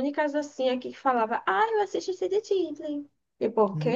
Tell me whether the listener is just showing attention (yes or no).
no